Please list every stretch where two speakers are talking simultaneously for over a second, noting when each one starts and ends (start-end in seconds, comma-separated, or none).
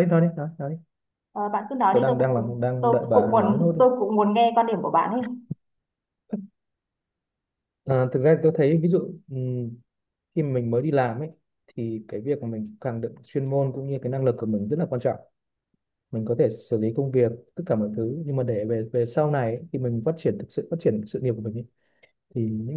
1.9-3.8